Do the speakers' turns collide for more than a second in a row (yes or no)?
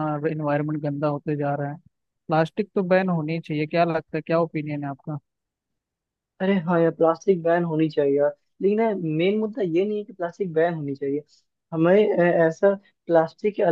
no